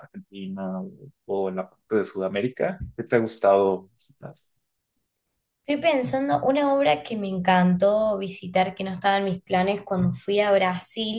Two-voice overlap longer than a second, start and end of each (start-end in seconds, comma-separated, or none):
none